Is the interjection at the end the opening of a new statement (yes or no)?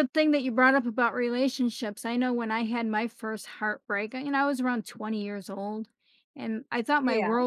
no